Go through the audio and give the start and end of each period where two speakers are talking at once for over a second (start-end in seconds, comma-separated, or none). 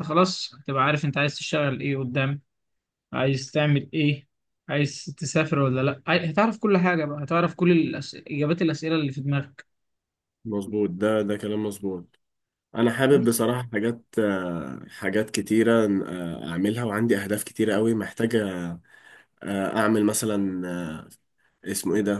none